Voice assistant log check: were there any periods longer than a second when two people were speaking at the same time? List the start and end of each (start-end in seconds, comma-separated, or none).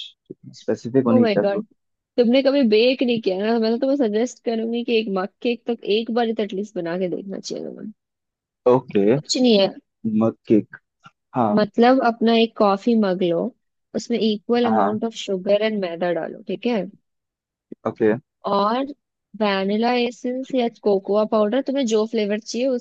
none